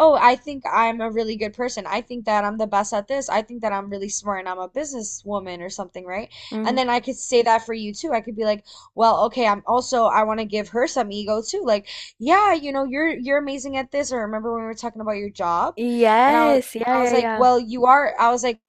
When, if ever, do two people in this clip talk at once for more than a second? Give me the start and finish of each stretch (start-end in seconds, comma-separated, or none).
16.3-17.5